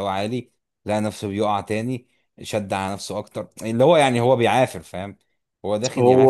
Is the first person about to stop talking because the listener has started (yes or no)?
no